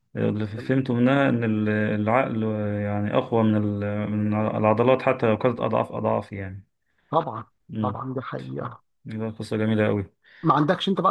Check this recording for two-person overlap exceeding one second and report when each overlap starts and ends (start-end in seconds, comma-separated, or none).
none